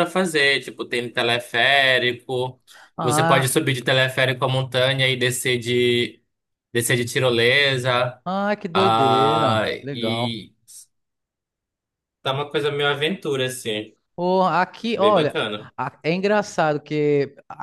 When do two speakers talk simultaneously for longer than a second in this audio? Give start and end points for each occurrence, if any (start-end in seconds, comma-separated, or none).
8.7-10.3